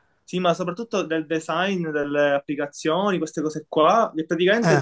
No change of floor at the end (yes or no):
yes